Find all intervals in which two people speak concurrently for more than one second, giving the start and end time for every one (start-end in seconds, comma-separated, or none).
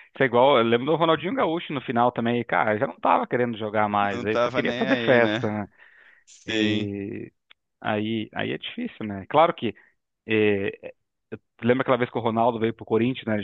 4.1-5.4